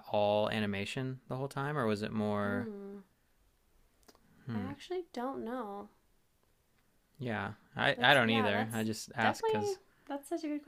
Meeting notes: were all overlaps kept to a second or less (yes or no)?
no